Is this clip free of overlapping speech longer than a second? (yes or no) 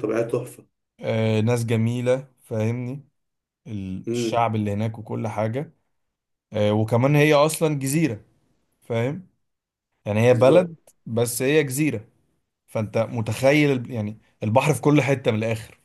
yes